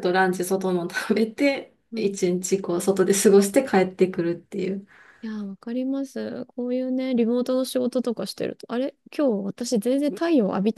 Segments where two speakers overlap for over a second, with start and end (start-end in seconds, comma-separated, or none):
none